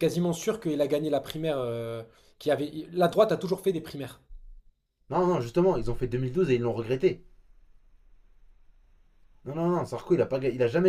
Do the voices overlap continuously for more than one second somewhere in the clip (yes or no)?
no